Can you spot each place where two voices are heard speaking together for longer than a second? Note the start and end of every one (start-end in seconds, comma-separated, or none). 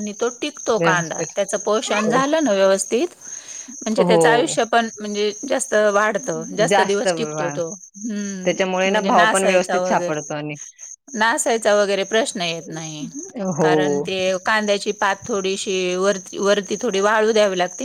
8.4-10.2